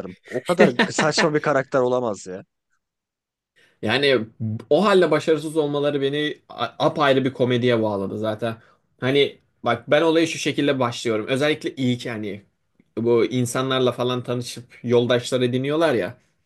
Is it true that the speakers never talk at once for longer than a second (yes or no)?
yes